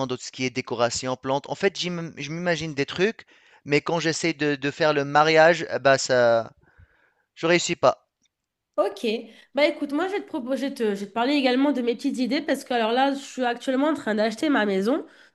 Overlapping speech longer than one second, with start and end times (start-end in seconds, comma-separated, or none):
none